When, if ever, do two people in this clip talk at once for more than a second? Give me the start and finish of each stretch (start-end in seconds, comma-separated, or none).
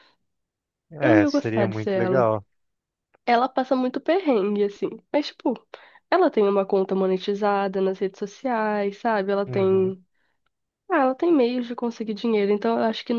1.0-2.2